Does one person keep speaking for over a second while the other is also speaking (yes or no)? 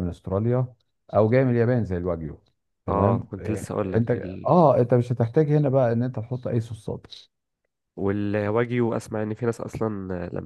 yes